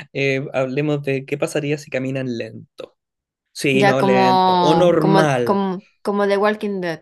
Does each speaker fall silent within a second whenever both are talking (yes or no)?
no